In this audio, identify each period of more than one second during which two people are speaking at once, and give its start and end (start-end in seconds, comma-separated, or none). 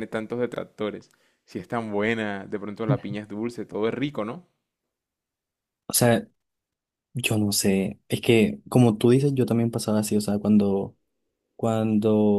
none